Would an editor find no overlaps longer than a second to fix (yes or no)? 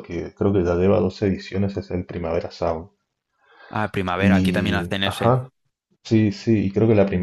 no